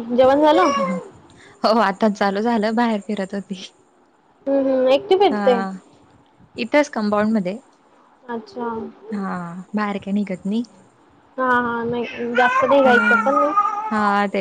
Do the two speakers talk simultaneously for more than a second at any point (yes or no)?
no